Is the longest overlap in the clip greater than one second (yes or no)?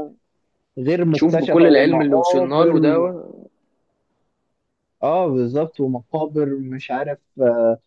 yes